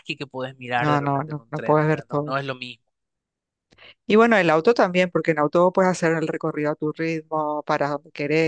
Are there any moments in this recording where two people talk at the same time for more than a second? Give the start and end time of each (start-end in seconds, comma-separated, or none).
0.8-2.4